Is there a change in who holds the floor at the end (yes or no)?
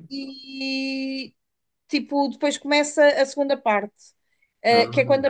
no